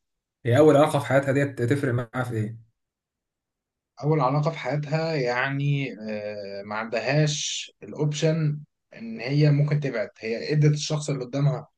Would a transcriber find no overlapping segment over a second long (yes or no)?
yes